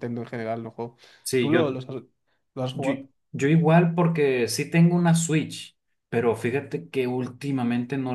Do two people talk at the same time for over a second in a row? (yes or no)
no